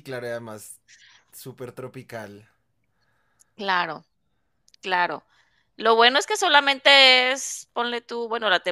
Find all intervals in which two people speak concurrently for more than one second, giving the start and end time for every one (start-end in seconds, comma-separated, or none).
none